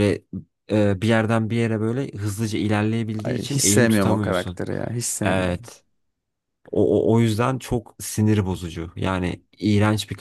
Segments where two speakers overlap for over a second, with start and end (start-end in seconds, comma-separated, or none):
3.2-4.6